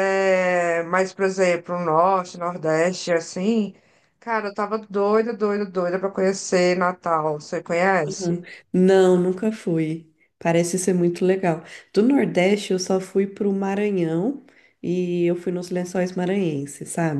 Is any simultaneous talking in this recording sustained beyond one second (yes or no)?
no